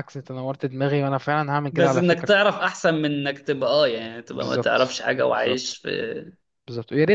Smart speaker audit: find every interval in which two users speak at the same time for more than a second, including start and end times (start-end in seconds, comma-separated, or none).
4.3-5.8